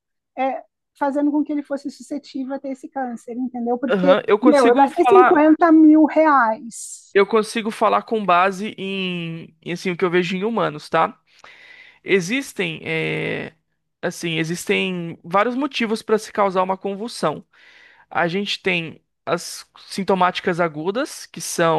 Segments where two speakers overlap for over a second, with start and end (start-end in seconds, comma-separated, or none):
3.9-5.4